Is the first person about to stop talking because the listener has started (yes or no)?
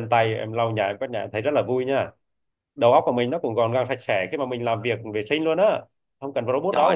yes